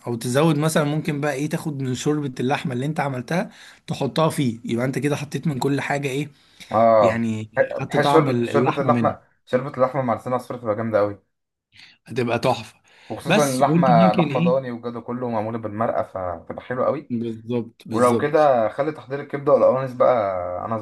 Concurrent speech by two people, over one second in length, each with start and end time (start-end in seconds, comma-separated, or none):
7.0-9.2, 13.3-14.7